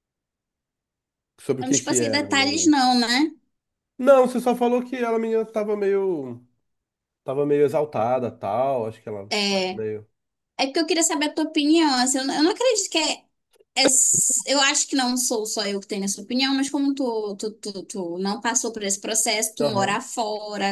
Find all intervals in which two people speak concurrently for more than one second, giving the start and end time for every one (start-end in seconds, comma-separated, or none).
1.6-2.9